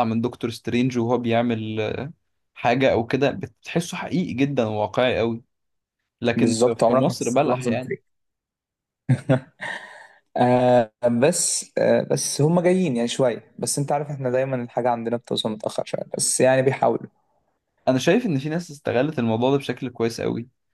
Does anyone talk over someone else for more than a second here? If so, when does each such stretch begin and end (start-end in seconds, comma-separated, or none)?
6.3-7.7